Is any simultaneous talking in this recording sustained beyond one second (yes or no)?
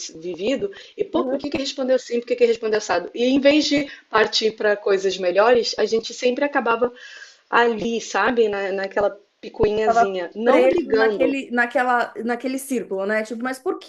yes